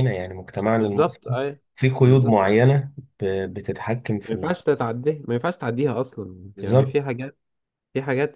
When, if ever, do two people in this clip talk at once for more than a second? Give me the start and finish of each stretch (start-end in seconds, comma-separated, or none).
none